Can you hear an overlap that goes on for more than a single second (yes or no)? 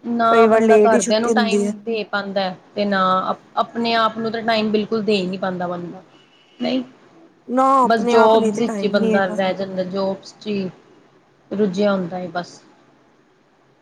yes